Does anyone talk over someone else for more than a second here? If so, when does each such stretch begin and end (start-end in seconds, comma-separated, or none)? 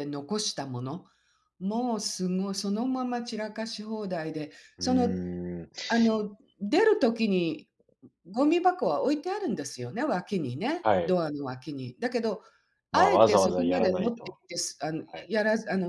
12.9-14.4